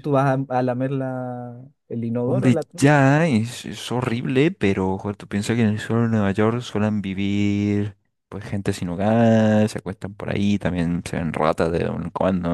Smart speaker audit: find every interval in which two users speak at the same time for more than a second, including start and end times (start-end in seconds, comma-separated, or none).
none